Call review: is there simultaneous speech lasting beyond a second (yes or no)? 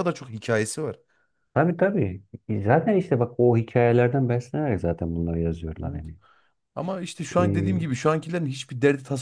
no